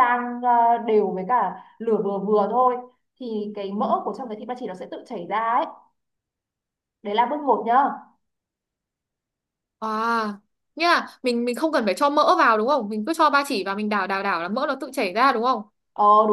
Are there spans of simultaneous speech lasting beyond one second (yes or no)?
no